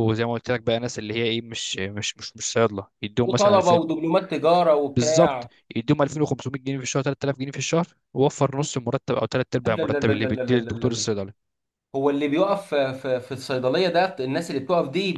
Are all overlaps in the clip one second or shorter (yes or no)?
no